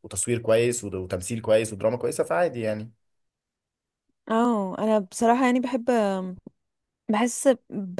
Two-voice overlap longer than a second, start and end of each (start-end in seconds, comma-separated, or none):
none